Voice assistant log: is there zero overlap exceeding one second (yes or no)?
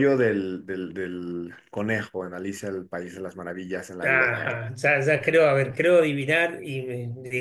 yes